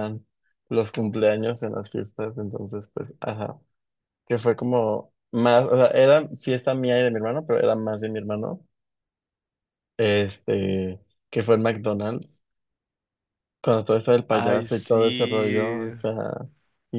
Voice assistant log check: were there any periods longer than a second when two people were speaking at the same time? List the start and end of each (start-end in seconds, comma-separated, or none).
14.3-15.8